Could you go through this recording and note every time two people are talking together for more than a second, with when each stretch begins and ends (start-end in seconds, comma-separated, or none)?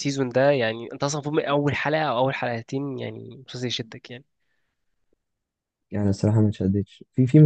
none